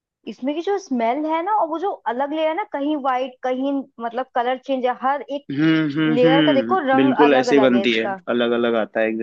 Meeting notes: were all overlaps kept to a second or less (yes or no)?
no